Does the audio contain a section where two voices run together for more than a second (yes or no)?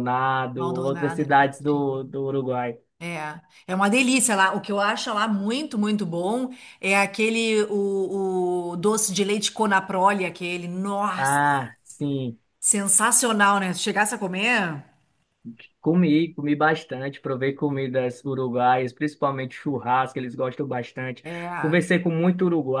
yes